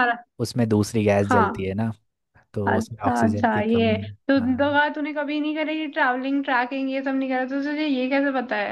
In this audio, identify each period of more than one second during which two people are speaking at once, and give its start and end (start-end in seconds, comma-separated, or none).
2.6-4.8